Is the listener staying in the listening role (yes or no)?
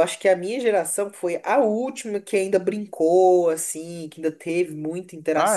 yes